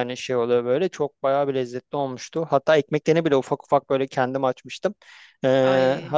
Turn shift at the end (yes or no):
no